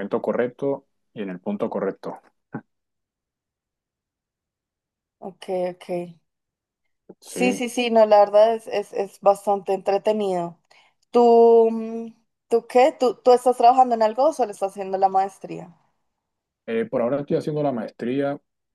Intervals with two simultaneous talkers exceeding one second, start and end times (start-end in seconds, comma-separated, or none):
none